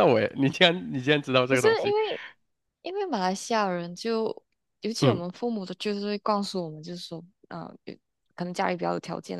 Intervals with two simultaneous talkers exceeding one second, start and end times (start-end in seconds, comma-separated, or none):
none